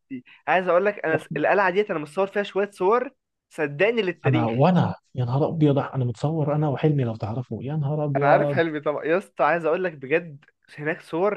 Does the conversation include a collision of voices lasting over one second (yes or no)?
no